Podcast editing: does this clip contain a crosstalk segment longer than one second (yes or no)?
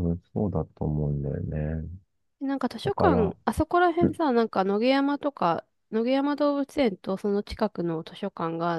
no